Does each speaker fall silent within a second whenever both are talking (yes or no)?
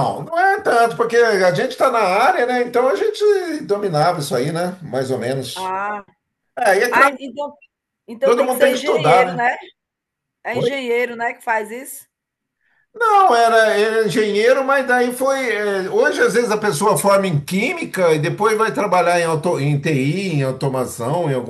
no